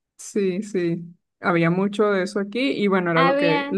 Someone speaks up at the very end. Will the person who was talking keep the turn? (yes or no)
no